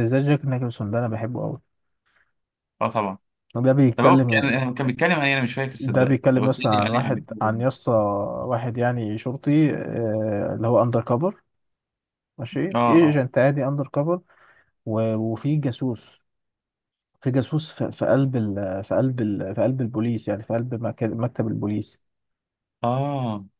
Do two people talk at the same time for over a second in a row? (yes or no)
yes